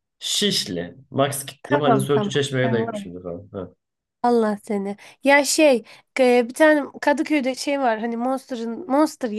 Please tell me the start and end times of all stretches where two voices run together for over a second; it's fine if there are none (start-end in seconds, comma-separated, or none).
1.6-3.1